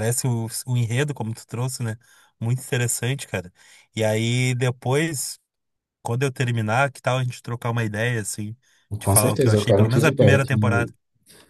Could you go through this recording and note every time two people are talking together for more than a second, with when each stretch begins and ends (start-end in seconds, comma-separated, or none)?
9.0-10.9